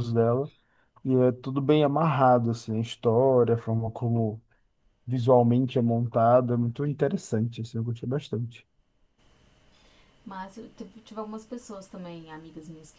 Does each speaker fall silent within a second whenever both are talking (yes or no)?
yes